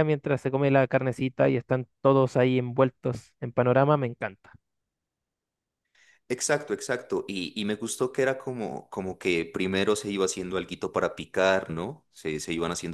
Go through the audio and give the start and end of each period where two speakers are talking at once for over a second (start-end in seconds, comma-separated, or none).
none